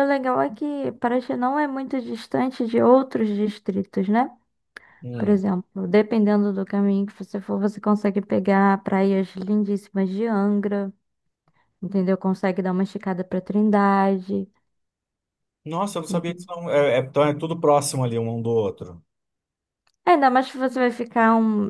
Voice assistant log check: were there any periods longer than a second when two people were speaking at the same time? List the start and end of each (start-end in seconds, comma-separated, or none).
none